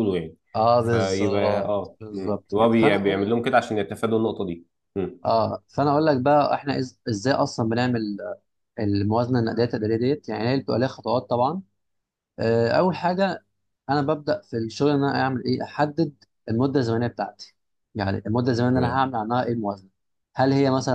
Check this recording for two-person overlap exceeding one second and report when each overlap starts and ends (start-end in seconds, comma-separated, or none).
0.8-3.4